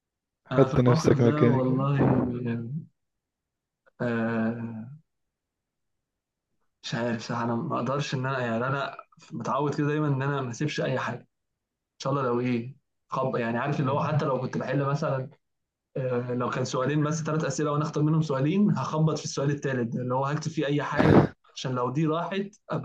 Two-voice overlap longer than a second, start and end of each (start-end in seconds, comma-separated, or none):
0.5-1.8